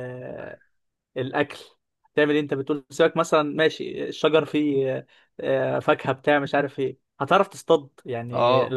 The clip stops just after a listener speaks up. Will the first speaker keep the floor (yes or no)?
no